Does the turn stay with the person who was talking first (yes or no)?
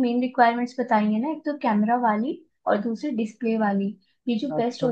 yes